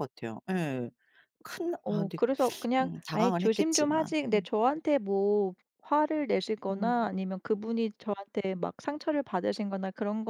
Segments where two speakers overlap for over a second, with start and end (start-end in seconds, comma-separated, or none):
2.8-4.5